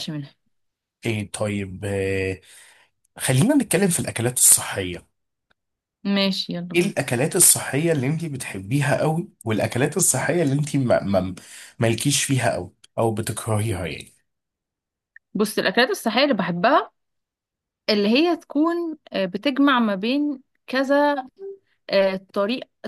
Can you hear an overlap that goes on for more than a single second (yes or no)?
no